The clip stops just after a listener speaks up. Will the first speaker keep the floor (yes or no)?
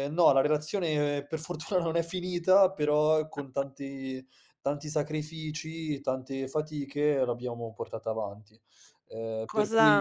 no